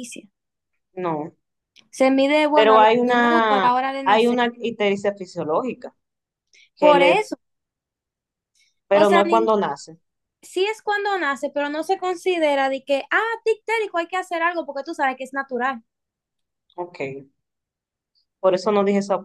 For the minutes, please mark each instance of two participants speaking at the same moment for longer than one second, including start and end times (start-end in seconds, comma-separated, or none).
2.5-4.4